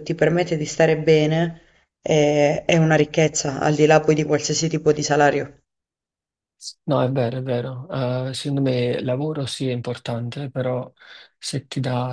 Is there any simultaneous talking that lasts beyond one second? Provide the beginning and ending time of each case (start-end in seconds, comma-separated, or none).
none